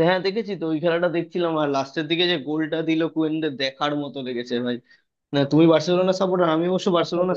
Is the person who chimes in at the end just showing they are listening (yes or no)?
yes